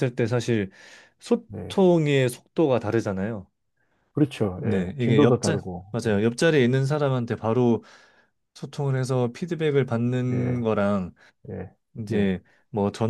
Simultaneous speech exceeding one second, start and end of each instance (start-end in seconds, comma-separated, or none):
4.6-6.2